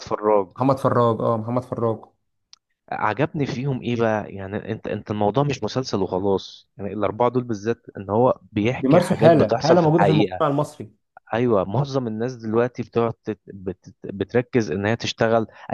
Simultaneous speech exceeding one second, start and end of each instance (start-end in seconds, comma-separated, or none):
8.8-10.4